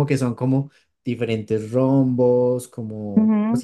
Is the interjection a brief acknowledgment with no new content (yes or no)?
no